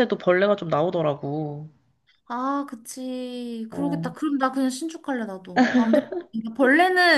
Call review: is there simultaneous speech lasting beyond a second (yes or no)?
no